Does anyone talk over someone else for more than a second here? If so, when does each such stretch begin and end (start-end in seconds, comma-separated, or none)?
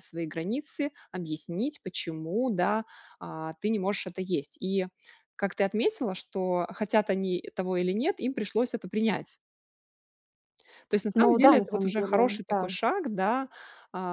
11.1-12.7